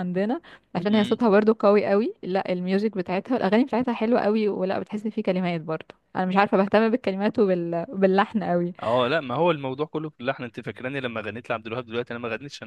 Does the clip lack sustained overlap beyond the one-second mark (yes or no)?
yes